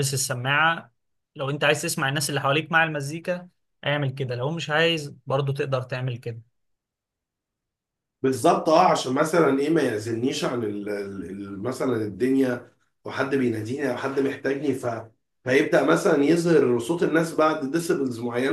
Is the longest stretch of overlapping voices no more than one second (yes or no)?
yes